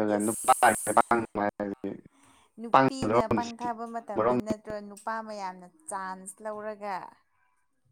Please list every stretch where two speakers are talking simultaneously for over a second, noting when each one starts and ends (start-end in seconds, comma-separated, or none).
2.7-4.3